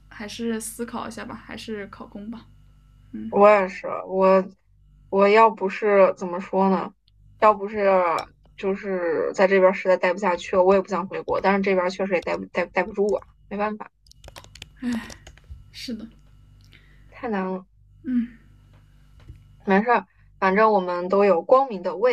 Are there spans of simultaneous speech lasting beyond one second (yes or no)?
no